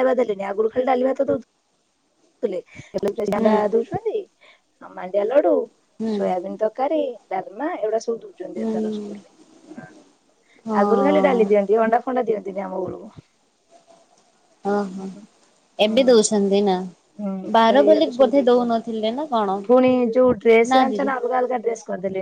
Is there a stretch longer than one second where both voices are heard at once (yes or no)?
yes